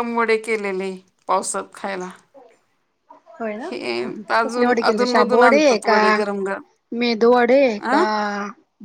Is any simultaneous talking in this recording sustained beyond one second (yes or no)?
yes